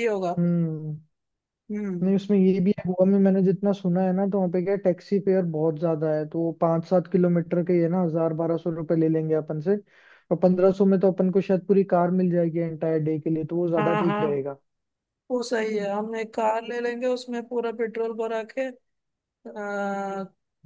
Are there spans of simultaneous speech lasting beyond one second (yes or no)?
no